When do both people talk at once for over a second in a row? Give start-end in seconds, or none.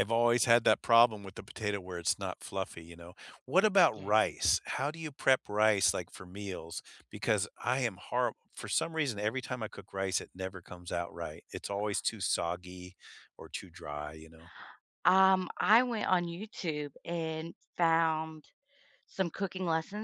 none